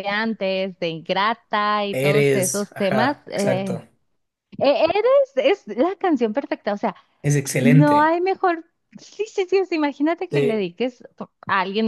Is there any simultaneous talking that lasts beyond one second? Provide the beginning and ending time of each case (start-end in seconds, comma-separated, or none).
1.9-3.8